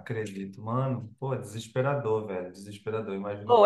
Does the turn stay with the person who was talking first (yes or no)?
no